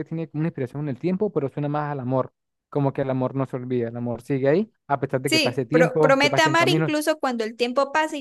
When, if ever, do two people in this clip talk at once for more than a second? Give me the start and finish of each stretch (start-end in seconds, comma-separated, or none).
5.3-6.9